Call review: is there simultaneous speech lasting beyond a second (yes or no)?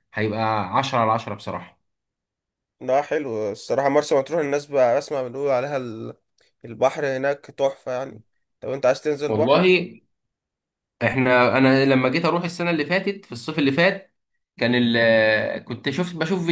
no